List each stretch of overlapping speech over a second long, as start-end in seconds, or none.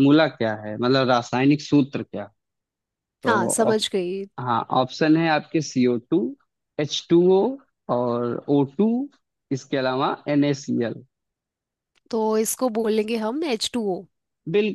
none